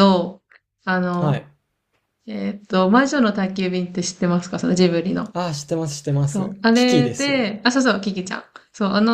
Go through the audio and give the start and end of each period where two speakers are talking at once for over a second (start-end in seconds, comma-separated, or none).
6.3-7.5